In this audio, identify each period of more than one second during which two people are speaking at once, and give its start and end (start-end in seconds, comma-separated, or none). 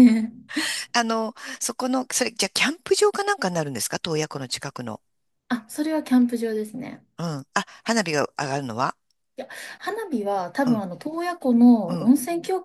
none